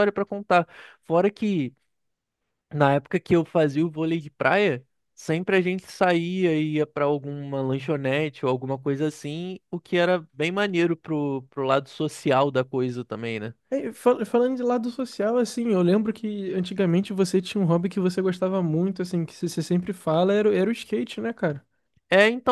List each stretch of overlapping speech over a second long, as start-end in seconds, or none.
none